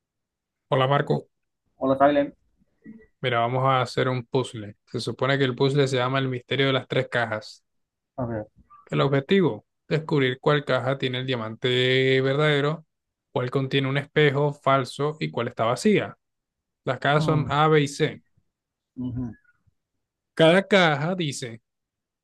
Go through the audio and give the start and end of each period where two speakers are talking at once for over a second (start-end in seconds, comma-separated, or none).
none